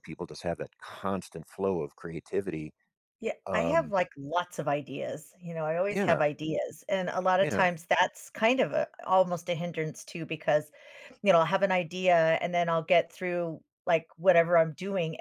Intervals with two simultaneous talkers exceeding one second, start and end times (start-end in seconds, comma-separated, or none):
none